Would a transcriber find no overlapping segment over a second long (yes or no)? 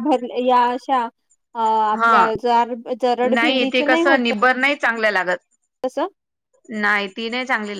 yes